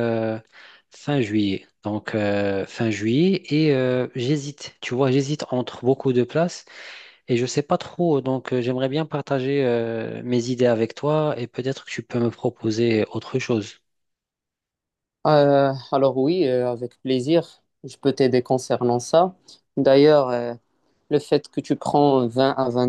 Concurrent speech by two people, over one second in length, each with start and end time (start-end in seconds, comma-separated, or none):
none